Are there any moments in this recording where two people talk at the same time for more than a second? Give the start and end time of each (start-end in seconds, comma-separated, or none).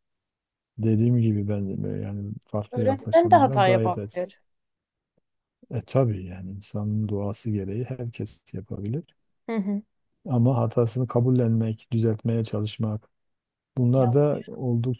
2.7-4.3